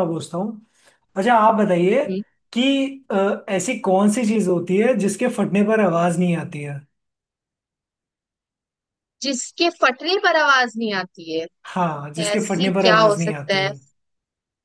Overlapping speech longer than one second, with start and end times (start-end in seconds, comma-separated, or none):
12.3-13.7